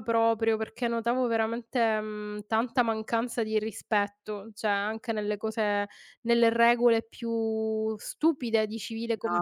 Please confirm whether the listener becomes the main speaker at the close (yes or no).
yes